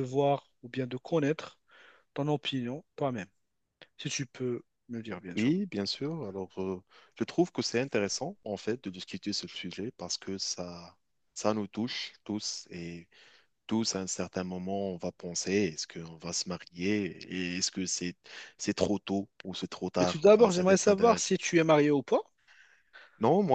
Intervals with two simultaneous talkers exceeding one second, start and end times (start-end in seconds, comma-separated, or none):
20.0-21.3